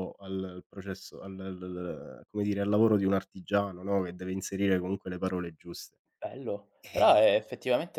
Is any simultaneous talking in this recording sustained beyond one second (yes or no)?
no